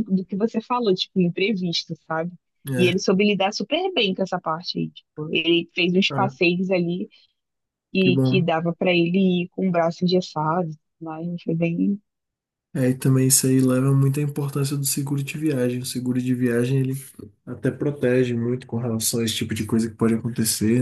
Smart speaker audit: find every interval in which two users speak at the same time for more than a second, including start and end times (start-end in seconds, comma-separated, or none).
none